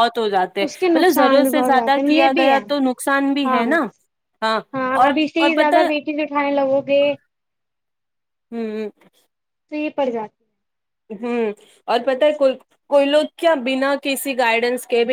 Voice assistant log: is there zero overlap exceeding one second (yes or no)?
no